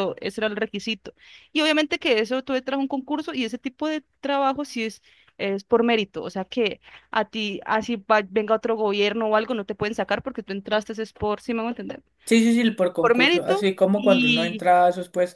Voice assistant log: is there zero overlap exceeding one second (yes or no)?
no